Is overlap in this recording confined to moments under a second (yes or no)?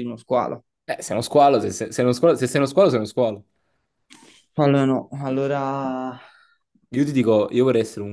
yes